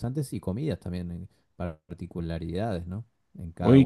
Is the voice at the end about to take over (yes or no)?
yes